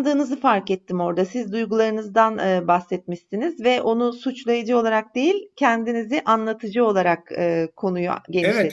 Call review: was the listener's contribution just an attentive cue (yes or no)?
no